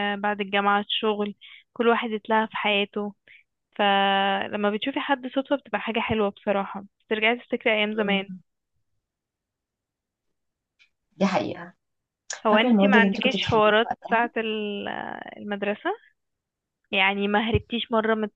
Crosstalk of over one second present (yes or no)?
yes